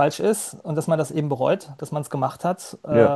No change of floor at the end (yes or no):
yes